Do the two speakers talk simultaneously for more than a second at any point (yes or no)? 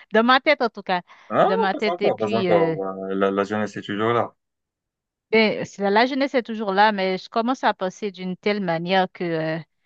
yes